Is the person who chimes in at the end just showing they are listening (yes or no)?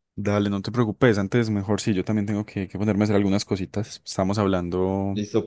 no